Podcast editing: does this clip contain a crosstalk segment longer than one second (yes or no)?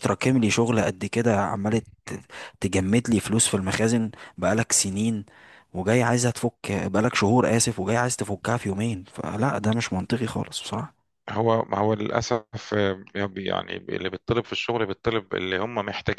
no